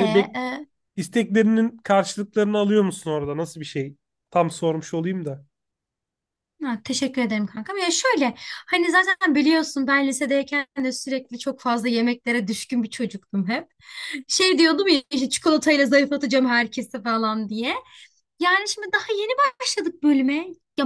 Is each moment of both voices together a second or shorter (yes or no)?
yes